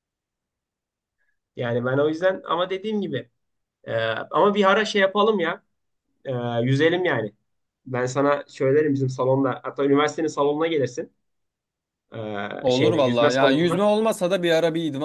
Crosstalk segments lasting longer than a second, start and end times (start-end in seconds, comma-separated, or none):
12.6-13.8